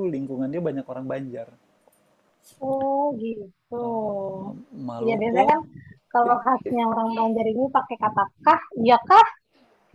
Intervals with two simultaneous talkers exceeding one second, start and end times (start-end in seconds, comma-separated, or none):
none